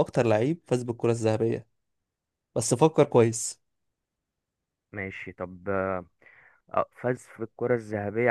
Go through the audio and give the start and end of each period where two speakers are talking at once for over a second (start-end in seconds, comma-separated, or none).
none